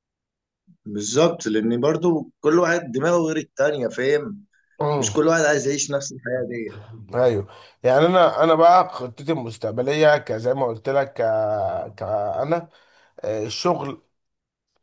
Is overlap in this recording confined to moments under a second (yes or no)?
yes